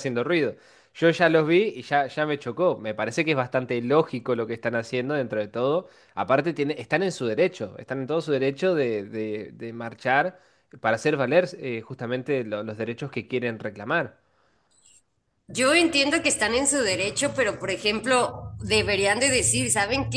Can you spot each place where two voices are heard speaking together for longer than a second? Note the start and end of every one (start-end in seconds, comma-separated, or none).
none